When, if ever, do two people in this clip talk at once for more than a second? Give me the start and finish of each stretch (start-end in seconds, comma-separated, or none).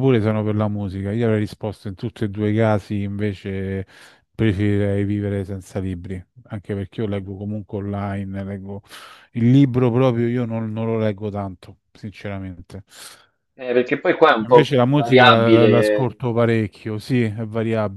14.5-16.1